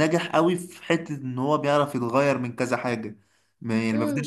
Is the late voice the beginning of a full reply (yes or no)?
no